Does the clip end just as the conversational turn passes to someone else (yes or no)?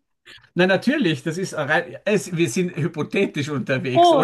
yes